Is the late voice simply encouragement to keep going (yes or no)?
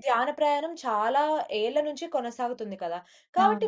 yes